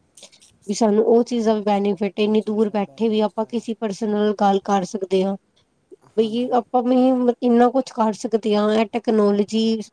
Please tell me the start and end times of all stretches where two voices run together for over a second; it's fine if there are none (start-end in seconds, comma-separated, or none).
2.2-3.6